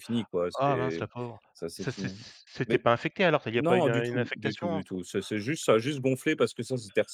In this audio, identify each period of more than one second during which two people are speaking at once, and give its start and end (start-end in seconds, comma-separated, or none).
3.6-4.8